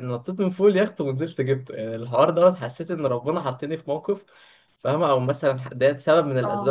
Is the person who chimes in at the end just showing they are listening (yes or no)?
yes